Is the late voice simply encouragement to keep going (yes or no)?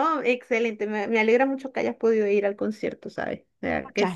no